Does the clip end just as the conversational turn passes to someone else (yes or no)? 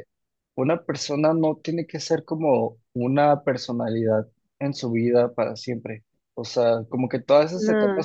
no